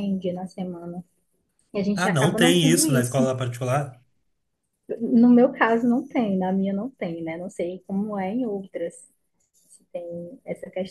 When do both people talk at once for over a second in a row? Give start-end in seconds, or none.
1.9-3.3